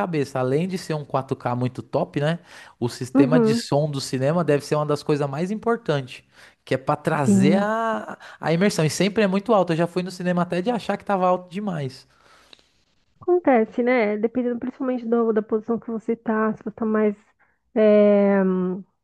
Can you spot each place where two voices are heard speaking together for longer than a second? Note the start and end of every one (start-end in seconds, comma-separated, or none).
none